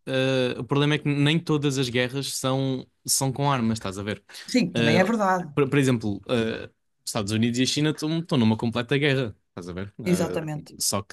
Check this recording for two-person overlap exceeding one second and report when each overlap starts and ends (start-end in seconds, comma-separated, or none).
none